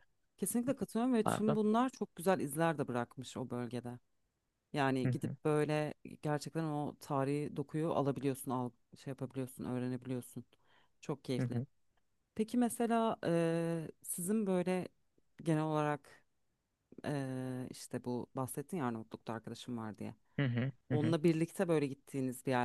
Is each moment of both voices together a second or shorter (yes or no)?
yes